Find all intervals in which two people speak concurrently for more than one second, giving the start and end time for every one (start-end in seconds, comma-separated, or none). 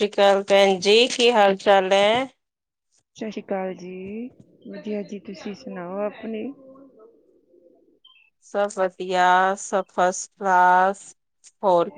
none